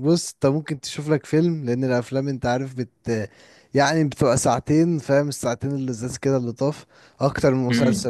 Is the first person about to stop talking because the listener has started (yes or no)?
no